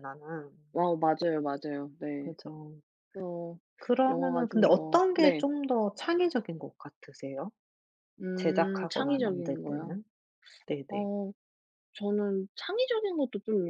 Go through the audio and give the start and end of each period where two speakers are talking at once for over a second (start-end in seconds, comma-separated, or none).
4.1-5.4, 8.3-10.0